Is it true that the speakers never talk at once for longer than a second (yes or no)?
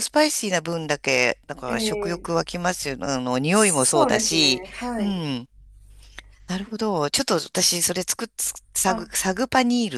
no